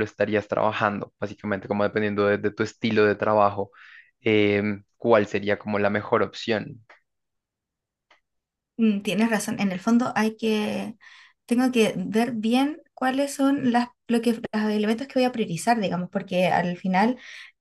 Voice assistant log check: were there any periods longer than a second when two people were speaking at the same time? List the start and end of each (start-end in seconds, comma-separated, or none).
none